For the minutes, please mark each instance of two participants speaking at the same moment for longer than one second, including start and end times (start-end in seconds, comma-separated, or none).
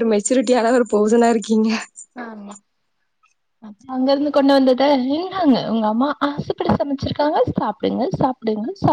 none